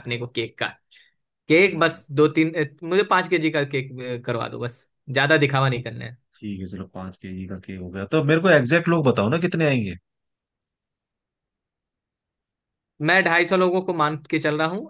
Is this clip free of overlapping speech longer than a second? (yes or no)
yes